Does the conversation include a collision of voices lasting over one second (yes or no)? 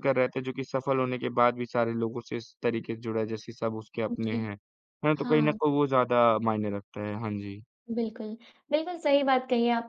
no